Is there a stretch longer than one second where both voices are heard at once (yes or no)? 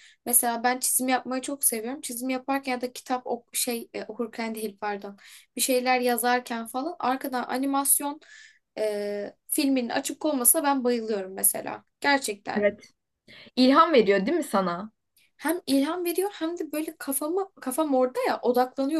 no